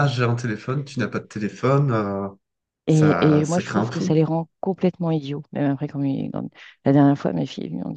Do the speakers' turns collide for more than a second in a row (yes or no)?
yes